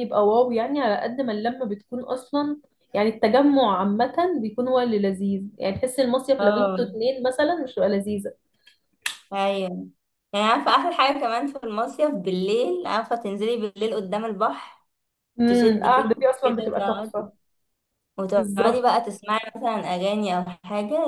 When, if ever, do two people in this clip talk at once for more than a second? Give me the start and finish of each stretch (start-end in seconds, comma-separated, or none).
15.5-17.2